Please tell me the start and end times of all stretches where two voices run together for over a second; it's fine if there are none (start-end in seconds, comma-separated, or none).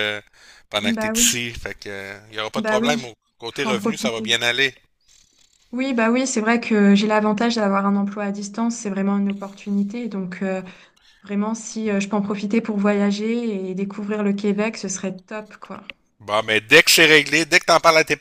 2.5-4.3